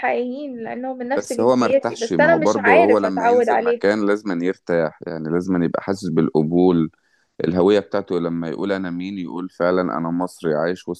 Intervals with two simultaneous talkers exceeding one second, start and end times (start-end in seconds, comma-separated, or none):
1.2-3.8